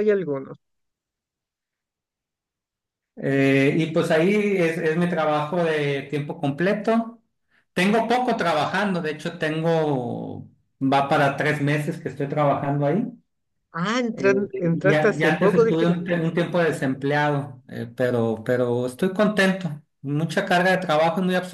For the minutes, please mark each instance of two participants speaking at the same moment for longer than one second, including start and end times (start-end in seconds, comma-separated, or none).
14.1-16.2